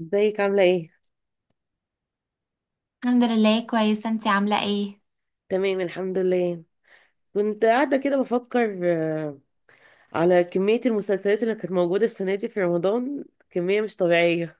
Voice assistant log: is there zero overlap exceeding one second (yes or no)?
yes